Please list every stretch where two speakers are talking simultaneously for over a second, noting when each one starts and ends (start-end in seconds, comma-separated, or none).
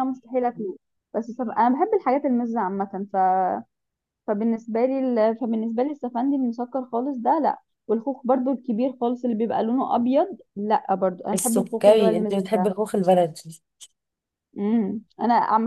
11.3-12.7